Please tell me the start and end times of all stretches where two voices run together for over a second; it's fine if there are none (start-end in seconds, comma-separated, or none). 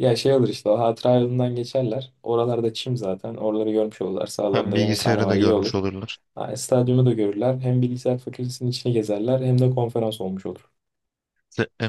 4.5-5.8